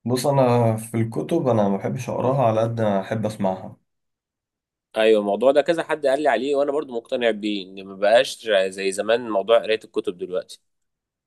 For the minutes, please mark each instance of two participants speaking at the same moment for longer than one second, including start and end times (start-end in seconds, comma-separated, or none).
none